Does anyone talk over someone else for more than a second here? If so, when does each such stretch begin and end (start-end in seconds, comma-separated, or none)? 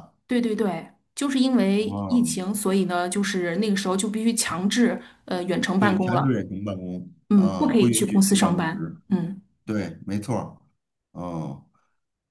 7.3-9.0